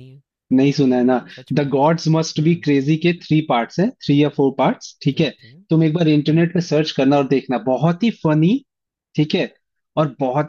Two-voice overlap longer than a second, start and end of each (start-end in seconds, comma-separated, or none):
none